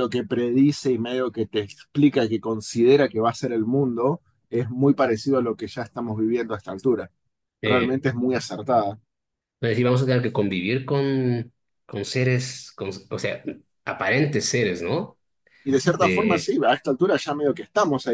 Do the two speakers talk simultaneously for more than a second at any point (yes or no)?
no